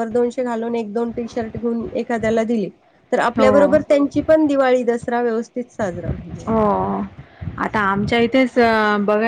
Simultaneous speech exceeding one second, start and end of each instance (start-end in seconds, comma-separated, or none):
none